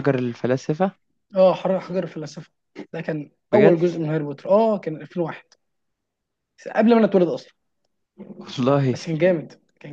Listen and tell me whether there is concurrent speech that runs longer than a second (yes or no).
no